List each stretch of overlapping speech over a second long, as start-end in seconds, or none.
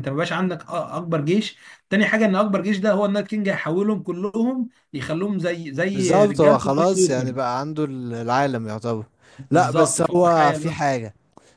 5.9-7.3, 9.5-10.8